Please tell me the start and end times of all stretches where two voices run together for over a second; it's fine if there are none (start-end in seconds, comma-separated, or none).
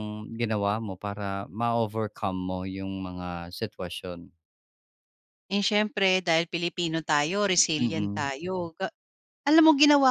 none